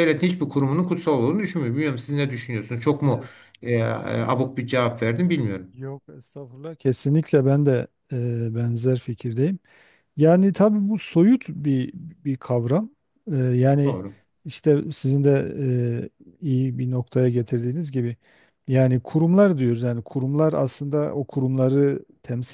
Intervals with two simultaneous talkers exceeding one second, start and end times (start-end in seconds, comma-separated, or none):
none